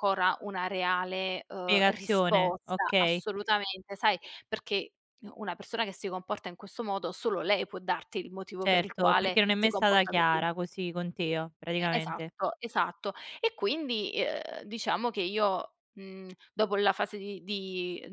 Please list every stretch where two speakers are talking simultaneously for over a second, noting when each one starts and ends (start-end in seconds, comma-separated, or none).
1.7-3.2, 8.6-10.4